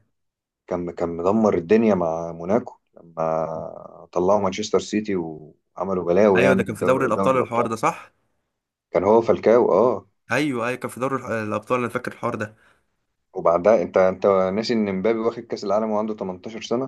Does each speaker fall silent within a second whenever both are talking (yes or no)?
no